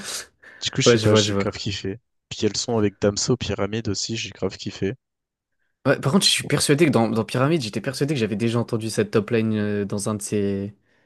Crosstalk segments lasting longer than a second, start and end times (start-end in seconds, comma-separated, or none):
none